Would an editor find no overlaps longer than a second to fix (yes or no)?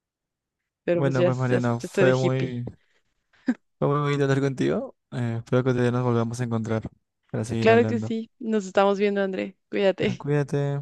no